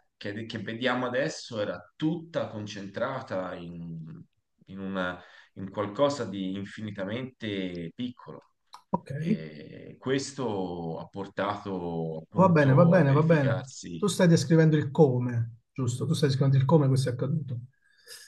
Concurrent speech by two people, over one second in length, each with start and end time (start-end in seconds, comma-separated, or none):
12.4-14.0